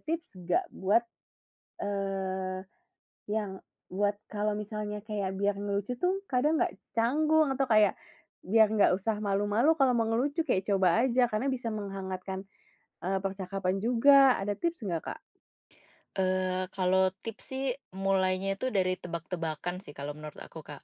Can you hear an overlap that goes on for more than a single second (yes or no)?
no